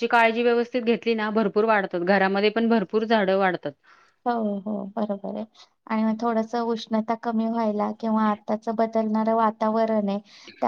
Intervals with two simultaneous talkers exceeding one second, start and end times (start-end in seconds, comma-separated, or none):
none